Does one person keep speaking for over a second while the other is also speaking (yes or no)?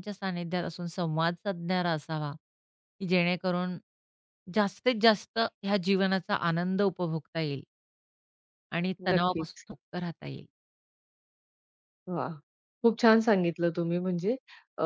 no